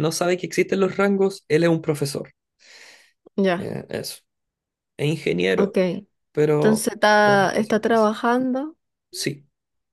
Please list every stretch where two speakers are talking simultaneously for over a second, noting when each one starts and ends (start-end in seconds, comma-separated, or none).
6.5-8.1